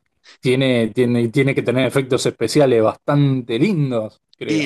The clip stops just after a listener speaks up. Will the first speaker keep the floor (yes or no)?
no